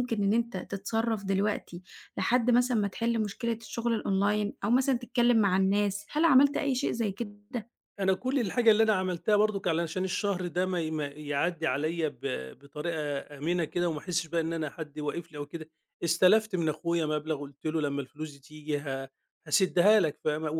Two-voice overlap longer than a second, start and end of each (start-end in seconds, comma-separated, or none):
none